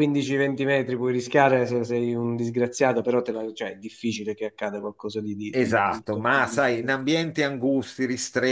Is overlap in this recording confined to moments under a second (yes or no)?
no